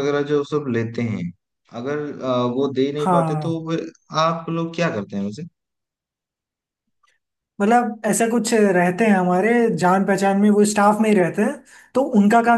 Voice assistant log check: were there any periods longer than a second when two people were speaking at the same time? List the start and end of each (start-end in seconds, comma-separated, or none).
none